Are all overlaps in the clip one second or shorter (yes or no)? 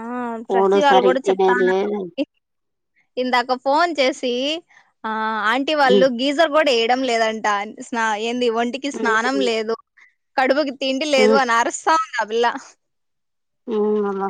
no